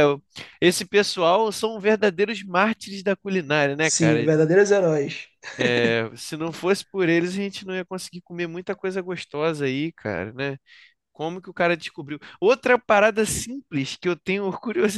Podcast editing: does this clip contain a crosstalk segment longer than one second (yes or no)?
no